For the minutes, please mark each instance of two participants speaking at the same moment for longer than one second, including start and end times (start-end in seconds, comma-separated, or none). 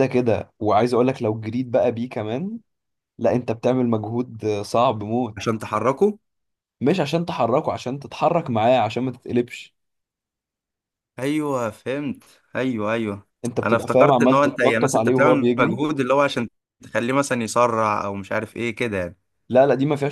13.6-15.8